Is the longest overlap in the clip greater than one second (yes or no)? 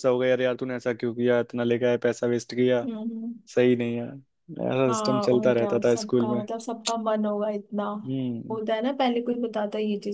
yes